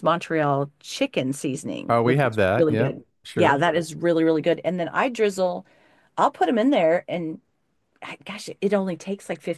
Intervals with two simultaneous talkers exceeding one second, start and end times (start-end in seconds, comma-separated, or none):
1.9-3.6